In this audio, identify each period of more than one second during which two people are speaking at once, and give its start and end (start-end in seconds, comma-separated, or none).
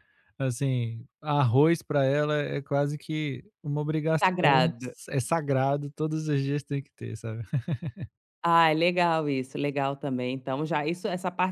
none